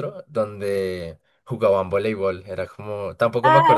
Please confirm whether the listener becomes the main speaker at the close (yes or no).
yes